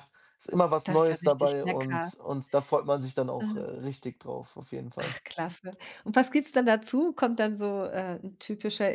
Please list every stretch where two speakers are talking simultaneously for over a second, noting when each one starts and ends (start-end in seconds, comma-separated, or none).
0.8-2.1